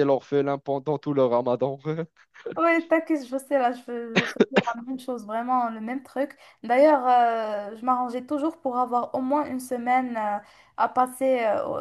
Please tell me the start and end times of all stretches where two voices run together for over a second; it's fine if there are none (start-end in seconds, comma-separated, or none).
none